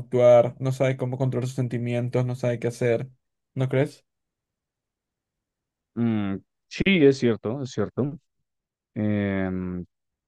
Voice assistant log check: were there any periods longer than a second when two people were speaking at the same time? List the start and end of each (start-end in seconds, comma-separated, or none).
none